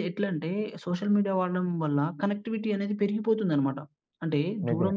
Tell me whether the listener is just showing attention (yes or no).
yes